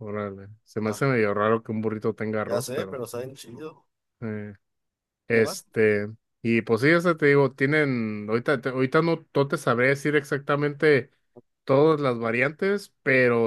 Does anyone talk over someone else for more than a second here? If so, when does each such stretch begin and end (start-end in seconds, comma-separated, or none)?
none